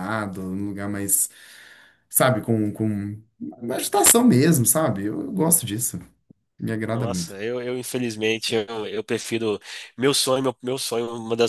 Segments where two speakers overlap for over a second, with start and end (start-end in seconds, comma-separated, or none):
none